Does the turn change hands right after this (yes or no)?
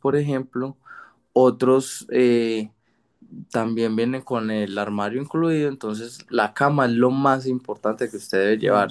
yes